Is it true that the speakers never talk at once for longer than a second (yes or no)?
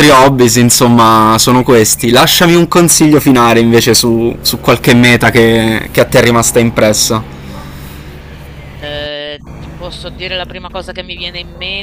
yes